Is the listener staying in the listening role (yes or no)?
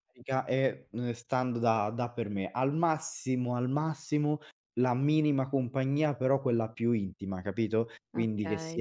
yes